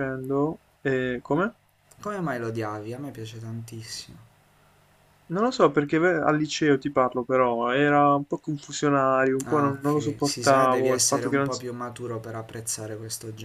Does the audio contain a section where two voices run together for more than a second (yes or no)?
yes